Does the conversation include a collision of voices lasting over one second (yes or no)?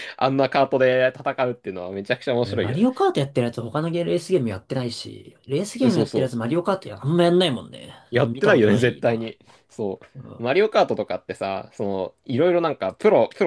yes